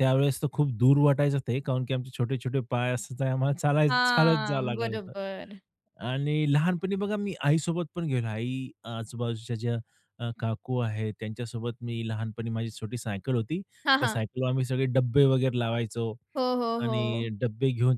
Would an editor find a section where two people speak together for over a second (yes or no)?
yes